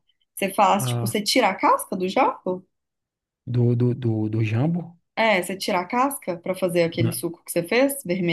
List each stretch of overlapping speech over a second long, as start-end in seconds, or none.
none